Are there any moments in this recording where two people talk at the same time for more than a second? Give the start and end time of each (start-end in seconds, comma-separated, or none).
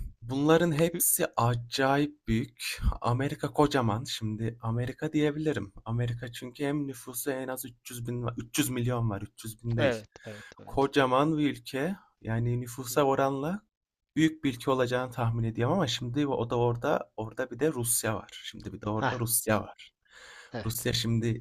none